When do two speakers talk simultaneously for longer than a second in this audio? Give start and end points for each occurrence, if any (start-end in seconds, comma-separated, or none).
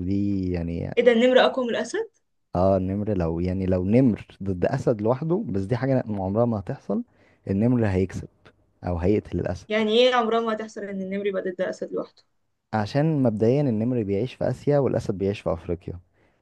none